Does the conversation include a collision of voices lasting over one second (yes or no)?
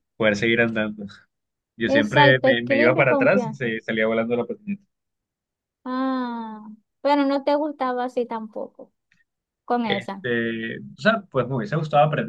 yes